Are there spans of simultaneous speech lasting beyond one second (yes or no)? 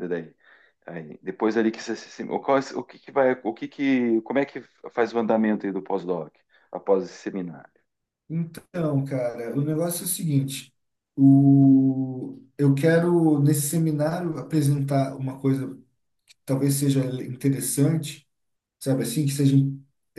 no